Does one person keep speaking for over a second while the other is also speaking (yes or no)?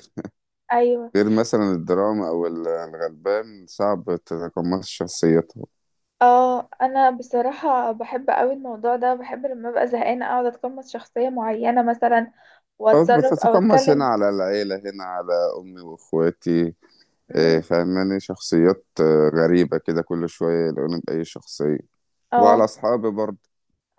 yes